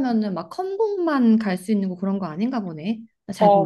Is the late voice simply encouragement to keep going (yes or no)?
no